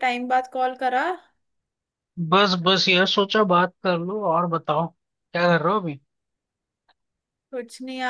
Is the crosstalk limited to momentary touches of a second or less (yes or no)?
yes